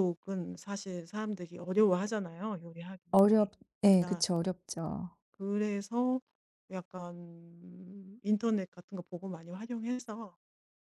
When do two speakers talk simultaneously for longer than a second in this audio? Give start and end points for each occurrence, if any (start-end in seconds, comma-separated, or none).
none